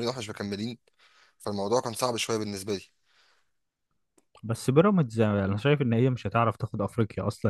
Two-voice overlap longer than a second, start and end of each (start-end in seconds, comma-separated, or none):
none